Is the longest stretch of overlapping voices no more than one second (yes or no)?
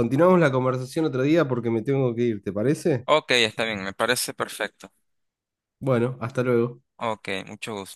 yes